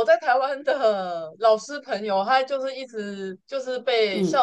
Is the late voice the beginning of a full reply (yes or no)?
no